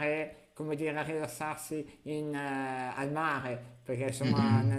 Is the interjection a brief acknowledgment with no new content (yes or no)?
yes